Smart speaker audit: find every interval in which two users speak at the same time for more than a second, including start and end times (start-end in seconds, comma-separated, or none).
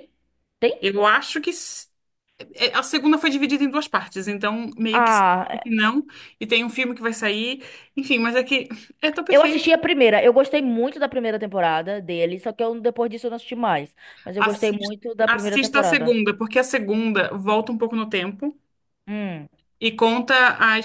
14.4-16.1